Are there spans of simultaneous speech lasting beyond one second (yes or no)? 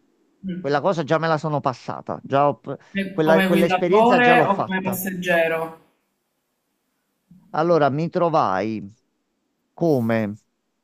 yes